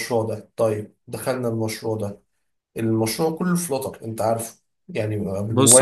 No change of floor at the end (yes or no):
no